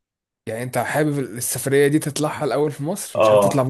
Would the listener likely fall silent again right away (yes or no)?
no